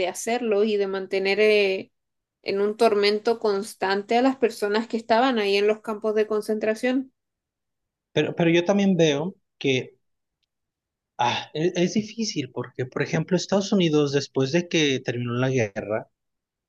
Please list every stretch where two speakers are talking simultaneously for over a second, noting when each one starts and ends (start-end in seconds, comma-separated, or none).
none